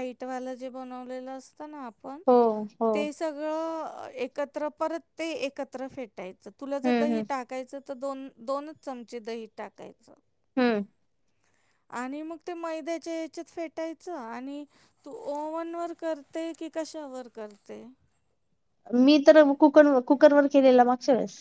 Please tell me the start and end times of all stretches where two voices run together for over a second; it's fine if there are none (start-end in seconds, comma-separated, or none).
none